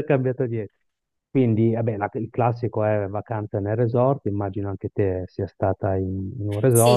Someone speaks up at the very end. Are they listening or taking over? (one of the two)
taking over